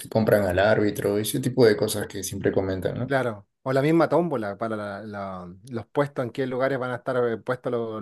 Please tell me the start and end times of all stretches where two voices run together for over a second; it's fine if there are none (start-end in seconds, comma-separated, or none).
none